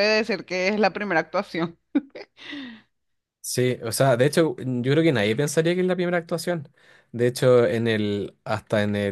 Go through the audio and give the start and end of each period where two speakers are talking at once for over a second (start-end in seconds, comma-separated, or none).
none